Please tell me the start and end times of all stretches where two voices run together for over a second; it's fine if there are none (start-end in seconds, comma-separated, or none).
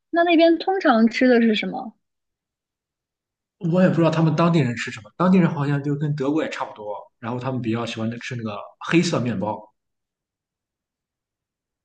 none